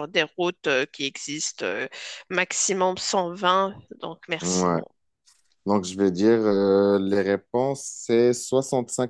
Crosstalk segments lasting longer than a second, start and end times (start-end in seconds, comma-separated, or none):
none